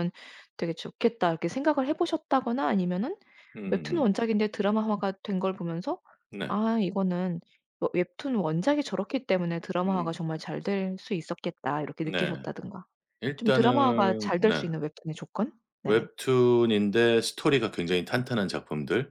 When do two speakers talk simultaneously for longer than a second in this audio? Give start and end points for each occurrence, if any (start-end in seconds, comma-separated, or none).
13.4-14.7